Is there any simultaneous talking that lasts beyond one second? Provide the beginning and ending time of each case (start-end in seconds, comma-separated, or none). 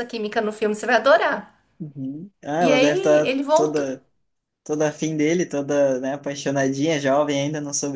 2.6-3.9